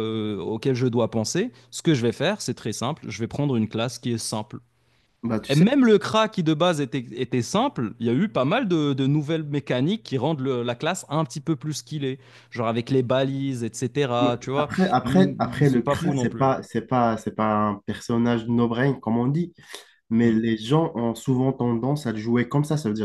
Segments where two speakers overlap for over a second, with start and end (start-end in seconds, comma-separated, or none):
14.2-16.5